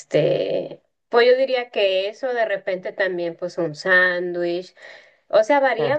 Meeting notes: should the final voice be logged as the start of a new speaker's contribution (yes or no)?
no